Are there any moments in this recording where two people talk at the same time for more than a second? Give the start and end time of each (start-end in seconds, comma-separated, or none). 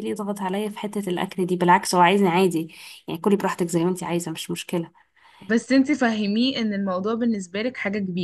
none